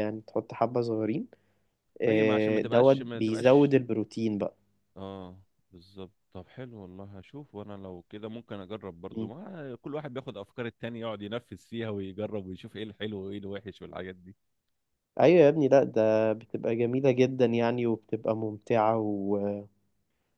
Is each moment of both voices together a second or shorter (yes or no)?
no